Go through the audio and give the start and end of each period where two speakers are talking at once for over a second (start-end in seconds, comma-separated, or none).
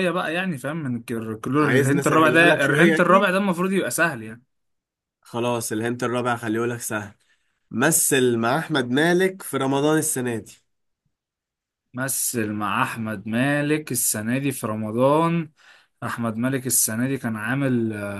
1.6-3.3